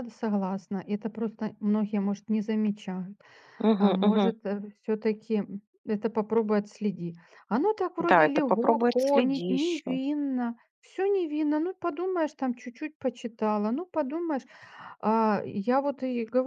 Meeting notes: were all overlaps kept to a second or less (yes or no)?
no